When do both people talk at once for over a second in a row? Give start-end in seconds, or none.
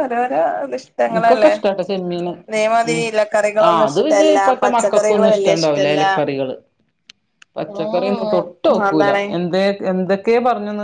3.7-6.0